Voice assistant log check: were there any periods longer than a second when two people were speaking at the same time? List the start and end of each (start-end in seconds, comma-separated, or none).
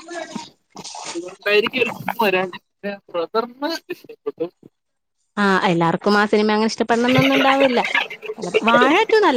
none